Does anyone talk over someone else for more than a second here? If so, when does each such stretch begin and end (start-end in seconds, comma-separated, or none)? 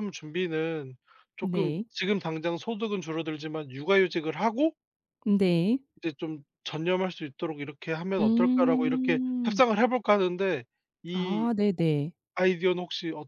8.2-9.6